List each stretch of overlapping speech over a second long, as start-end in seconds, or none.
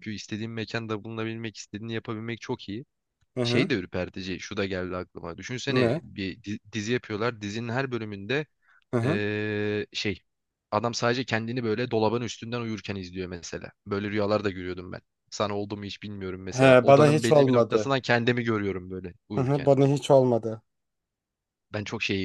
16.5-17.9